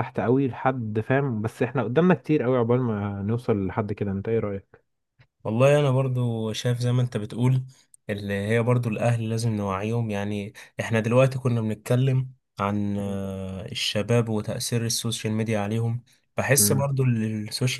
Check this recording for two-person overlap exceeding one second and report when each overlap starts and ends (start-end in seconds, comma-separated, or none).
none